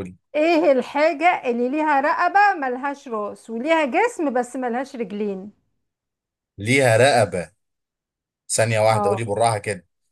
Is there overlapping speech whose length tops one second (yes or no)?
no